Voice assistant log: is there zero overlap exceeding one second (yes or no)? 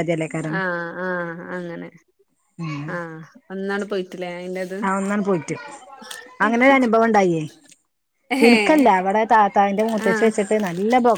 yes